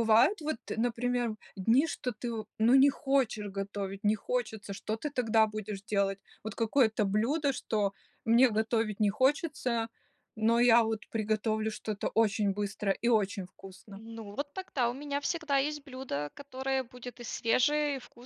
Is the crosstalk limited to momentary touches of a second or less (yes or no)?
yes